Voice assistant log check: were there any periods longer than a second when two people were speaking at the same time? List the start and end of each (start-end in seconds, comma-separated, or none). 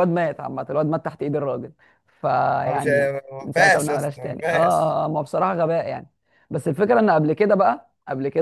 2.7-4.8